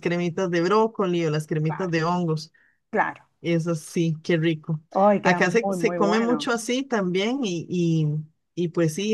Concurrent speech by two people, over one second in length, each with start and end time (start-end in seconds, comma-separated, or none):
5.2-6.5